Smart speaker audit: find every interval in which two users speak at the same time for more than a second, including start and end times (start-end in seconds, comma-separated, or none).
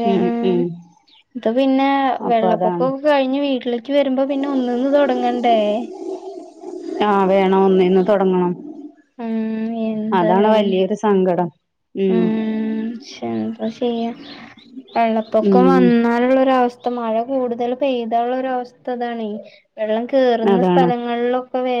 none